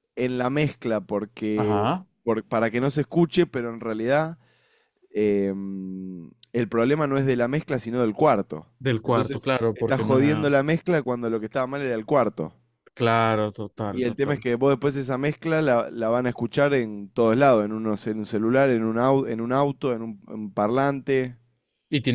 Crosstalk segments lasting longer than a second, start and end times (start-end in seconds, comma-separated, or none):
9.0-10.5